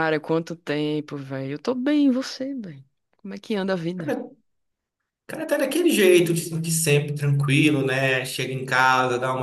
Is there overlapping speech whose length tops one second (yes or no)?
no